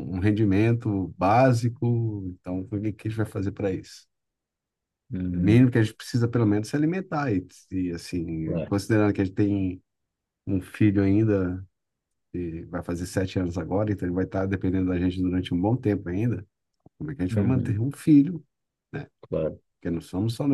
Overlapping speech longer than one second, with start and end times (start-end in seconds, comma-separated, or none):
none